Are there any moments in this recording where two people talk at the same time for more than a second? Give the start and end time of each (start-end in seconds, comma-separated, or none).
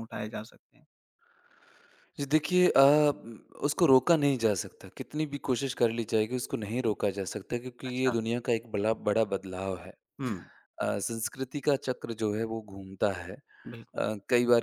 none